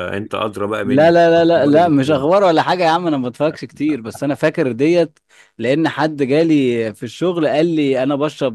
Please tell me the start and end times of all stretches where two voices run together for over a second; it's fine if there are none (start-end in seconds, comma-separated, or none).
0.9-2.3